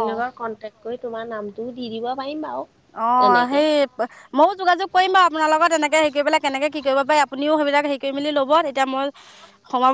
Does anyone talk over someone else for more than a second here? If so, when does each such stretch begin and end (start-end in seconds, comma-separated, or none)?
none